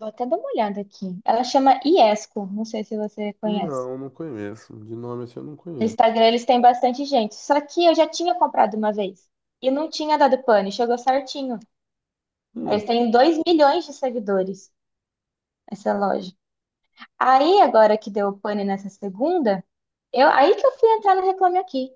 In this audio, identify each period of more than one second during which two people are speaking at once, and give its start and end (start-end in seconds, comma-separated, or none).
none